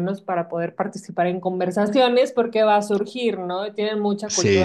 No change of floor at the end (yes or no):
yes